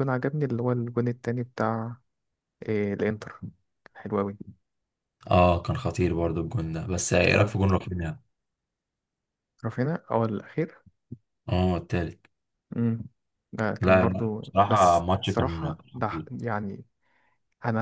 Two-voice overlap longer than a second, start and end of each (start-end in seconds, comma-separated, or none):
13.8-16.3